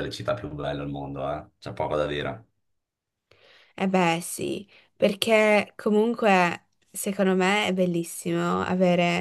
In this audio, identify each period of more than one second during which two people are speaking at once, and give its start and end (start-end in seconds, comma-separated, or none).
none